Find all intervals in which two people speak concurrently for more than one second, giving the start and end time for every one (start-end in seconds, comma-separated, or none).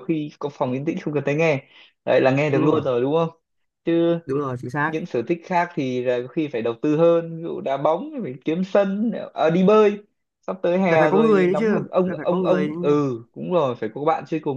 10.9-12.7